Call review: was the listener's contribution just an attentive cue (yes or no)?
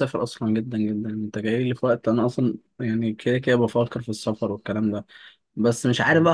yes